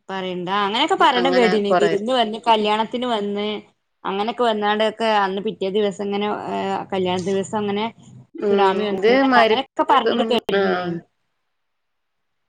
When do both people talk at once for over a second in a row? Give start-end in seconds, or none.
8.5-10.6